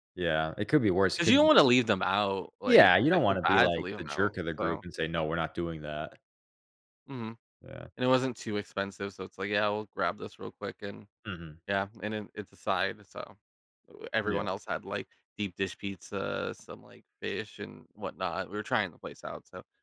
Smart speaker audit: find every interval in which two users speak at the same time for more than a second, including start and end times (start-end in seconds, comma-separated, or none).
2.6-4.8